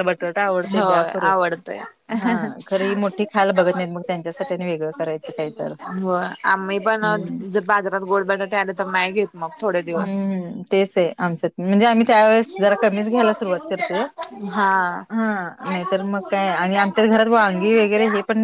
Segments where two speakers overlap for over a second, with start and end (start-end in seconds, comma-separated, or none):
none